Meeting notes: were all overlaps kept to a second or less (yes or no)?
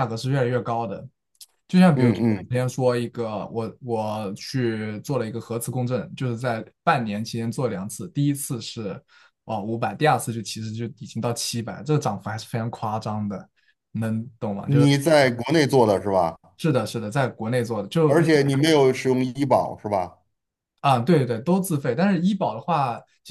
yes